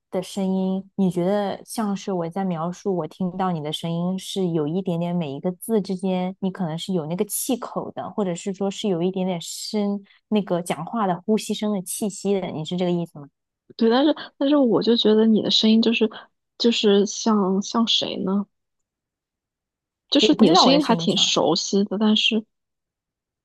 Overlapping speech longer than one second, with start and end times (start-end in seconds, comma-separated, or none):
20.2-21.4